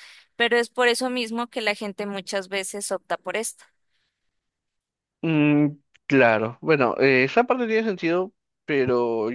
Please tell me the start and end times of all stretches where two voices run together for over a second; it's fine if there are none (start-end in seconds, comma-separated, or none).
none